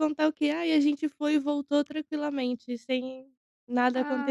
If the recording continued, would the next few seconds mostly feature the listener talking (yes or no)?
yes